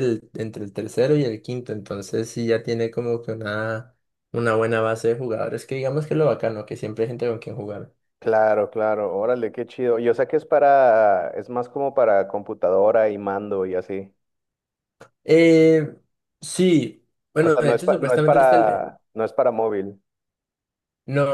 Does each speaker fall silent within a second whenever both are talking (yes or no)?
no